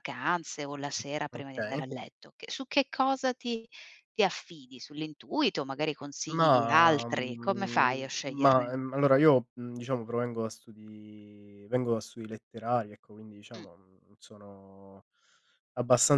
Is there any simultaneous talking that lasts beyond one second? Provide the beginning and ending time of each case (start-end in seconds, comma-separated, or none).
6.3-8.9